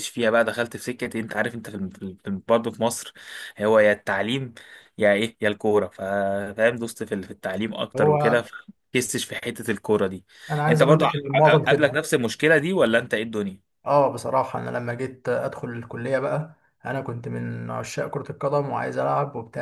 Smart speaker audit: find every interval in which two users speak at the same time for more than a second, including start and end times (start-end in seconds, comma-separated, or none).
10.7-11.9